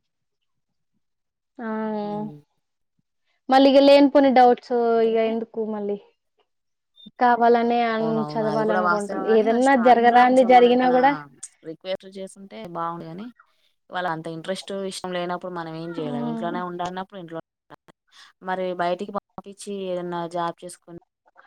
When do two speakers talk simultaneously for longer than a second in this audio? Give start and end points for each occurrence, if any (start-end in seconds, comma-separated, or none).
8.0-11.0